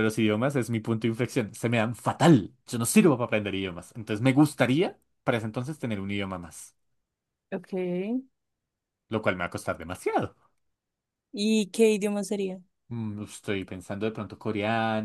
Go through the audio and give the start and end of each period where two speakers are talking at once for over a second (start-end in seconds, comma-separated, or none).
none